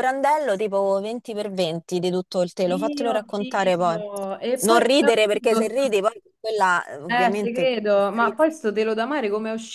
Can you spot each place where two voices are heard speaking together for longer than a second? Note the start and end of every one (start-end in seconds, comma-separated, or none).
2.6-4.0, 4.6-6.0, 7.1-8.5